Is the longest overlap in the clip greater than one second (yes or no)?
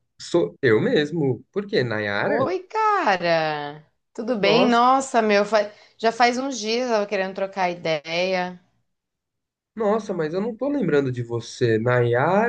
no